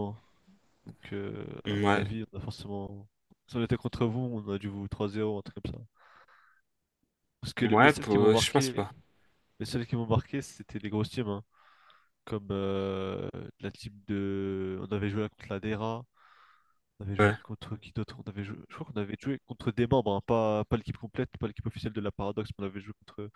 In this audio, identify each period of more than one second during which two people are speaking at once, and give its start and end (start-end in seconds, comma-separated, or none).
7.6-8.8